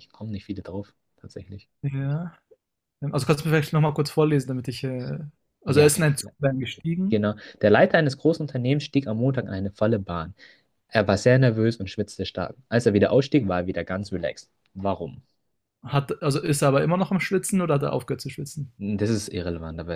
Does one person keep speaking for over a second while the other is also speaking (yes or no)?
no